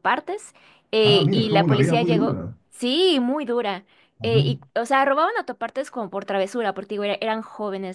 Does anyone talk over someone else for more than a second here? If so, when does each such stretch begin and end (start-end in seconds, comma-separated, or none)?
1.0-2.6